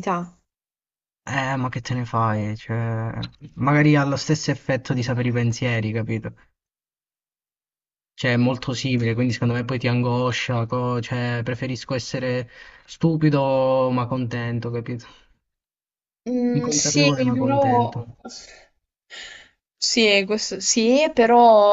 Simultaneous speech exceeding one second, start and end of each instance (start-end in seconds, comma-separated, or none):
16.5-18.0